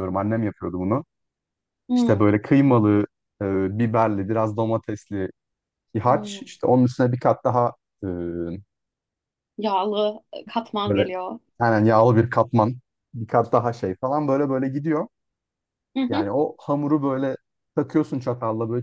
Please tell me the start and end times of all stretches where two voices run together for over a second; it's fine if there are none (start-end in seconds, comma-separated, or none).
none